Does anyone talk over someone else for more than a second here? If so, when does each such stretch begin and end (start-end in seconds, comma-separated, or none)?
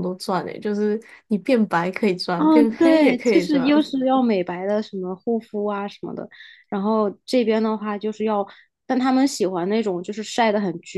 2.4-3.7